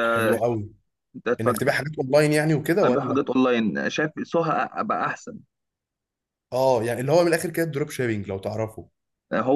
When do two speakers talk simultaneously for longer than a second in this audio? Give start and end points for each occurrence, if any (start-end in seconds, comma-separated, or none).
none